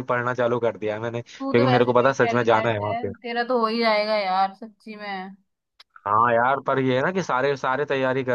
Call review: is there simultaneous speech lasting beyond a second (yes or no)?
yes